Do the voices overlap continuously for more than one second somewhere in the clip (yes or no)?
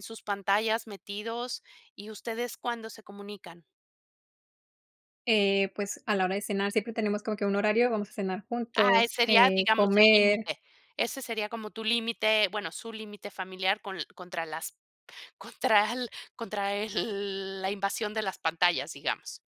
yes